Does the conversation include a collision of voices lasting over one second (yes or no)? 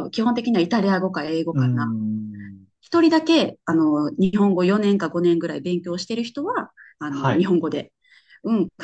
no